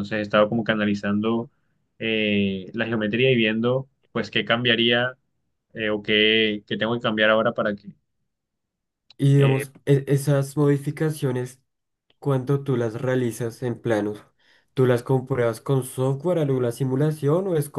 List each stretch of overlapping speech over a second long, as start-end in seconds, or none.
none